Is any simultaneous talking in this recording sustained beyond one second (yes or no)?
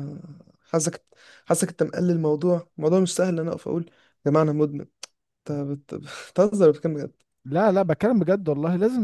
no